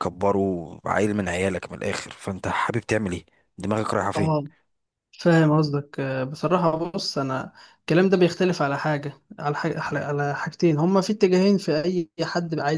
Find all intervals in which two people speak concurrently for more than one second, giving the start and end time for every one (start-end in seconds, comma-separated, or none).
none